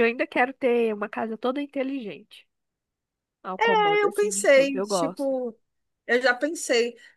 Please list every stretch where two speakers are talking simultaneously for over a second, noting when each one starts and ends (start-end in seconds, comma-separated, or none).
4.0-5.3